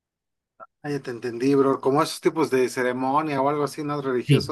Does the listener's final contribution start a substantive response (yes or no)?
yes